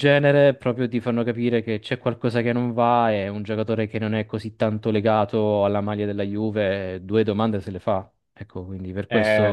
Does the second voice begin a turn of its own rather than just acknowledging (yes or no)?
yes